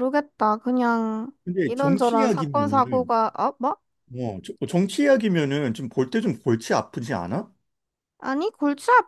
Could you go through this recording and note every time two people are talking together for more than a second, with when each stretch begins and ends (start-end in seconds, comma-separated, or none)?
1.4-3.1